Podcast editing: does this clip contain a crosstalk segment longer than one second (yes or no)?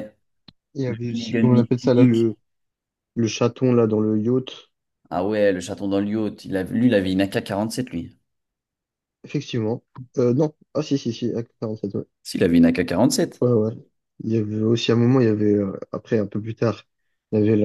yes